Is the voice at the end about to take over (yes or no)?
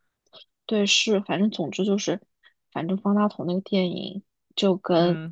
no